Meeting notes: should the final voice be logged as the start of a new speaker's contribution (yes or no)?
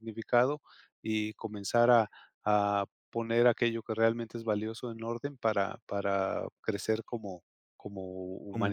yes